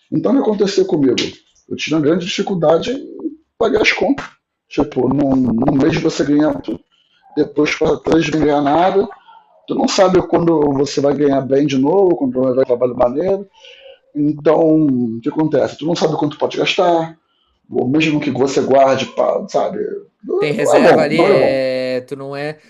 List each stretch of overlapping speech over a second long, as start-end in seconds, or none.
20.4-21.6